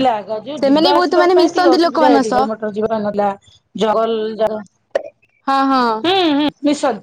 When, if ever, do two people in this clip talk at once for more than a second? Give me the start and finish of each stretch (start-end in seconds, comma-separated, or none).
0.6-2.5